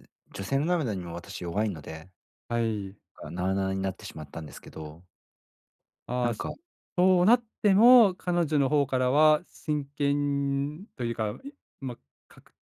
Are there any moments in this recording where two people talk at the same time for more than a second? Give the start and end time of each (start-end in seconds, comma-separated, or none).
none